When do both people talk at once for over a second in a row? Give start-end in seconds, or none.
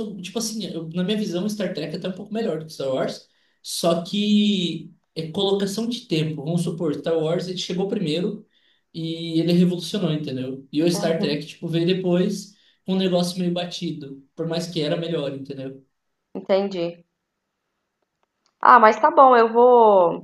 none